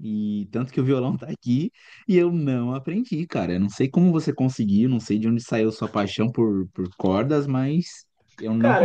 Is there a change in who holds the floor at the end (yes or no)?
yes